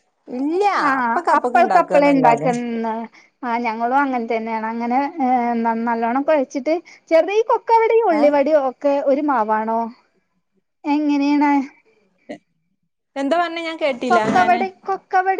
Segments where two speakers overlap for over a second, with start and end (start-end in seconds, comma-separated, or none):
1.0-2.5